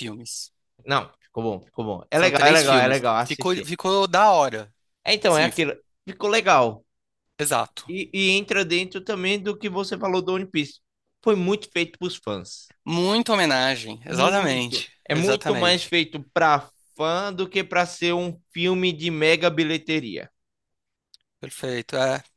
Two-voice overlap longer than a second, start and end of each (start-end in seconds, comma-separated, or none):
2.1-3.7, 14.1-15.9